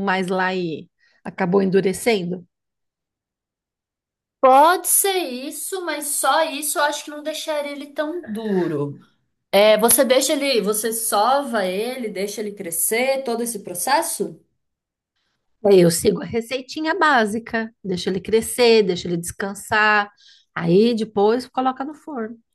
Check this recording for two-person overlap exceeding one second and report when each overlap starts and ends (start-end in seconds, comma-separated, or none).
none